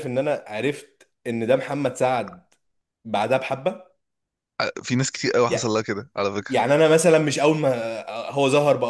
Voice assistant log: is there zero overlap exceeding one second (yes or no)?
yes